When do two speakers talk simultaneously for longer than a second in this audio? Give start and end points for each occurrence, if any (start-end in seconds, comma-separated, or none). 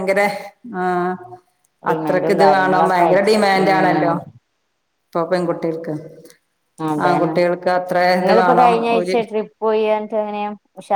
1.9-4.1